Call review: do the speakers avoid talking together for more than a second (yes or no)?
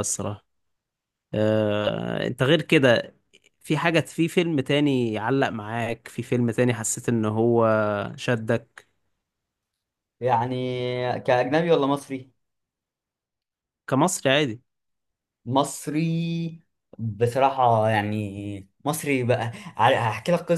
yes